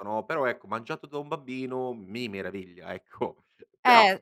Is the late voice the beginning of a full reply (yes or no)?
yes